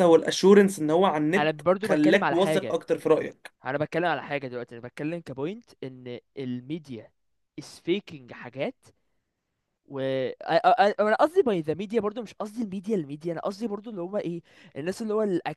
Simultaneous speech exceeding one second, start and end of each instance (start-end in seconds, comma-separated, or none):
1.4-2.8